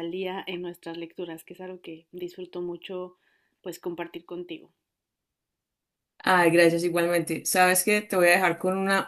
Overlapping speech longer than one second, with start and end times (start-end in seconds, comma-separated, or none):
none